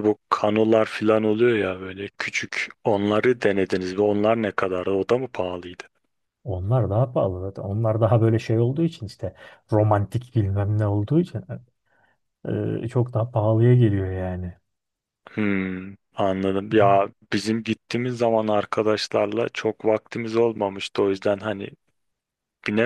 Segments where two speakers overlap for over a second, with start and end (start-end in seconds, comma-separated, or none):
none